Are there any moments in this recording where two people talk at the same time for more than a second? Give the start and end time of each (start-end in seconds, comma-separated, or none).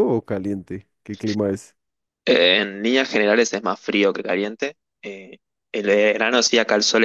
none